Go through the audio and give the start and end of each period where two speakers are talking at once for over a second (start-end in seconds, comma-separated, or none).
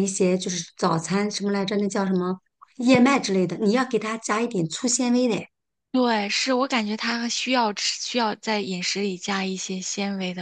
none